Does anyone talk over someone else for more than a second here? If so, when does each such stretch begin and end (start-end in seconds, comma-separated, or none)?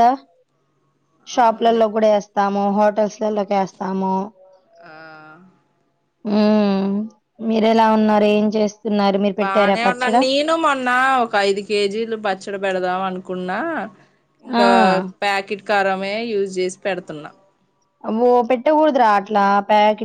none